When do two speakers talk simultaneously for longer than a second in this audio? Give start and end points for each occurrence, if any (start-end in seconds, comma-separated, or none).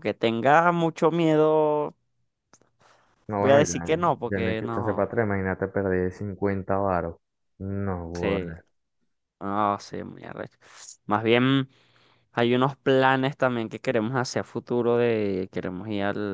3.4-5.1